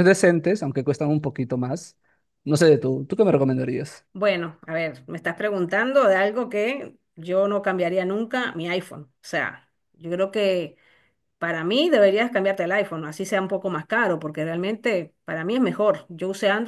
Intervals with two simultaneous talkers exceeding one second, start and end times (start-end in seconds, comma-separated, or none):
none